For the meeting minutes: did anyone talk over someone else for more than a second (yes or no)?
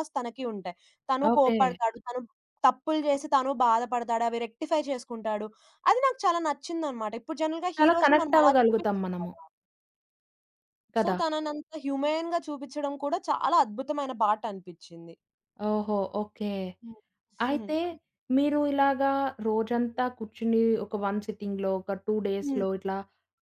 yes